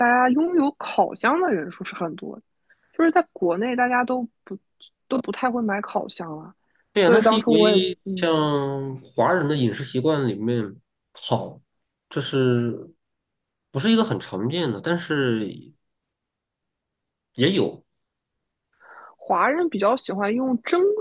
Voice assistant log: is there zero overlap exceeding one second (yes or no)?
no